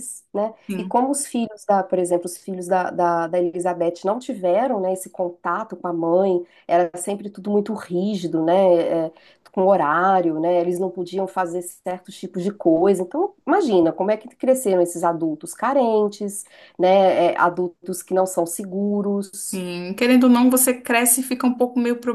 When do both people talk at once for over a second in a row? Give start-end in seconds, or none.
none